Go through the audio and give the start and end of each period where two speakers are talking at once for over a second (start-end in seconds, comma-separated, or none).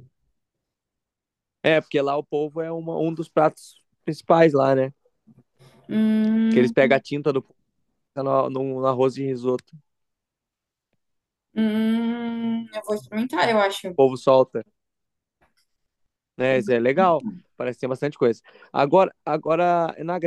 none